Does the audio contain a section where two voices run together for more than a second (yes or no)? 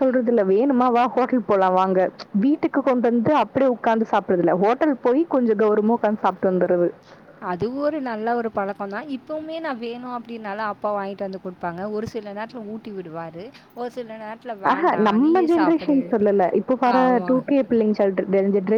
no